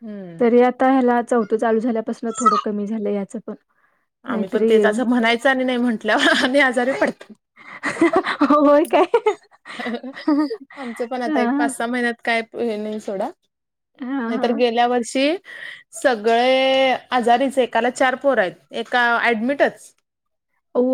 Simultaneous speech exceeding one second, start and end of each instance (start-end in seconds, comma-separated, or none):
none